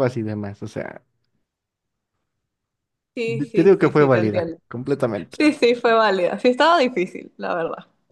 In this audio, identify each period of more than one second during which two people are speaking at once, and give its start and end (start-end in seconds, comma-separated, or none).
3.2-4.6